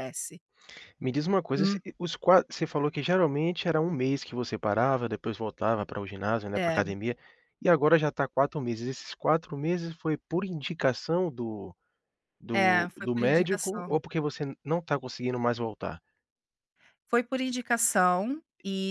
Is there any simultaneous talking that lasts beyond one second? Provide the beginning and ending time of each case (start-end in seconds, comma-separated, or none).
12.5-14.0